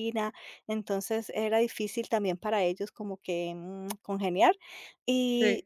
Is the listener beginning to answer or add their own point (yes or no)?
no